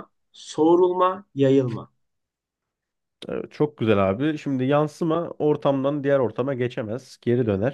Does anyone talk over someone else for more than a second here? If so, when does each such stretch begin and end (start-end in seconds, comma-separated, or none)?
none